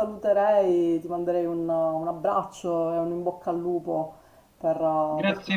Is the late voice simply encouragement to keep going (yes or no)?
no